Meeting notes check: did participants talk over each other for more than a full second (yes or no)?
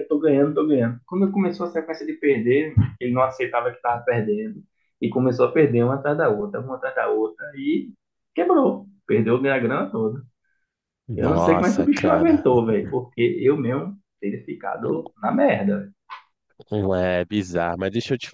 yes